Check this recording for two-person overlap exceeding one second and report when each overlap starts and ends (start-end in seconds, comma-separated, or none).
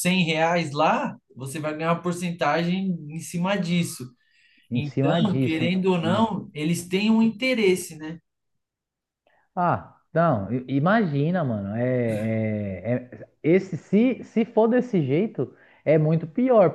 4.7-6.2